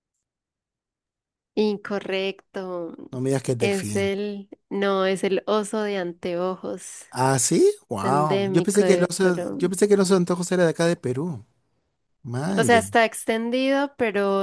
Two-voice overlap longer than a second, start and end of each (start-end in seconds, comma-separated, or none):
8.0-9.8